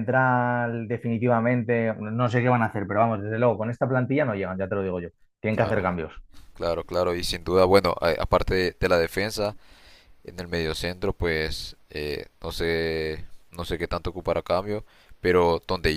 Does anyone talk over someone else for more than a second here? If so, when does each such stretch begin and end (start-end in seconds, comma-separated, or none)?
none